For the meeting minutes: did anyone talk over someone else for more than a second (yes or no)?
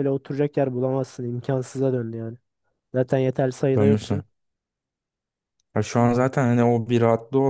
no